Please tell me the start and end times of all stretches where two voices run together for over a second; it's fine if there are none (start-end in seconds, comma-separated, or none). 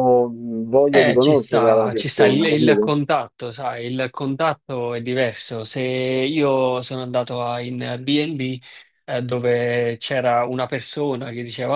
0.9-2.9